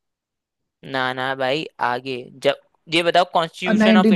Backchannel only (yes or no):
no